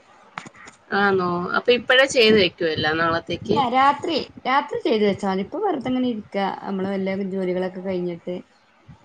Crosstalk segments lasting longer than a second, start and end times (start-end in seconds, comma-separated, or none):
none